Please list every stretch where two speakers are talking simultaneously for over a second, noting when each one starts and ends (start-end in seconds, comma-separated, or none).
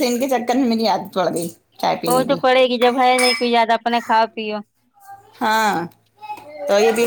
none